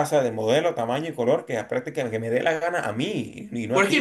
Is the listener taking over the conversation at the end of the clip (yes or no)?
yes